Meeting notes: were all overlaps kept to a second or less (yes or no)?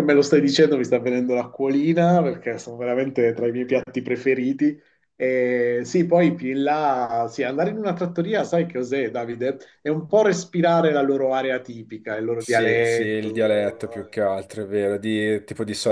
no